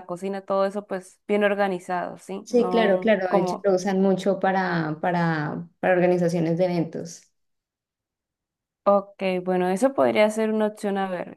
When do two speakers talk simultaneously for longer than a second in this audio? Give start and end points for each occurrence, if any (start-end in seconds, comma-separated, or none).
2.4-3.7